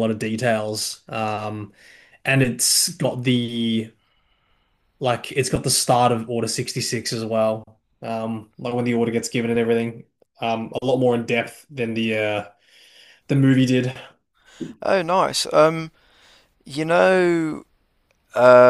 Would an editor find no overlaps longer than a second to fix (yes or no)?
yes